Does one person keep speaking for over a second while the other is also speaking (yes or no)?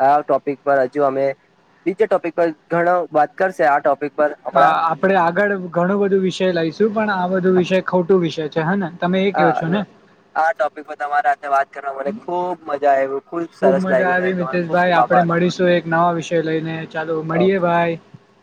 yes